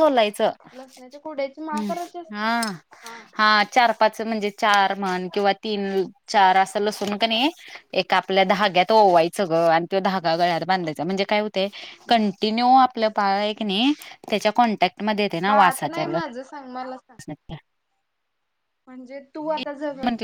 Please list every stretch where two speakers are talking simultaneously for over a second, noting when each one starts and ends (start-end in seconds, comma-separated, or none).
15.5-17.1